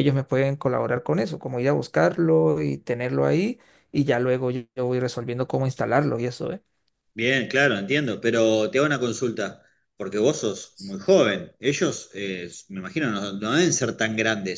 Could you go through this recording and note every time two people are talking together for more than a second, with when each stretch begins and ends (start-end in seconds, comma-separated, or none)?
none